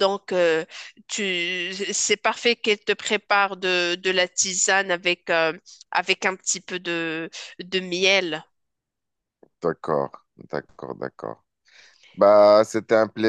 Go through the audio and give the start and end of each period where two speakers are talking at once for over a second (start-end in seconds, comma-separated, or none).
none